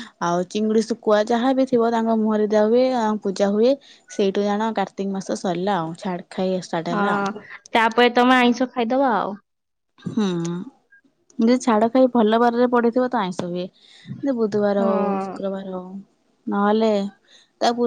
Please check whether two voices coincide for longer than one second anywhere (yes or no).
no